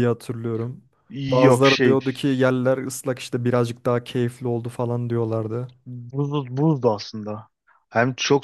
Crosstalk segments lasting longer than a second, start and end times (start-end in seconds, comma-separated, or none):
none